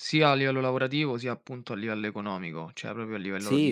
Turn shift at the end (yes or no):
yes